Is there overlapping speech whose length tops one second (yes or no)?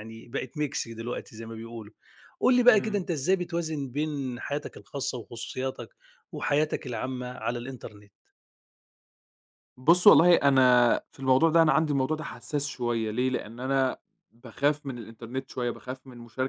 no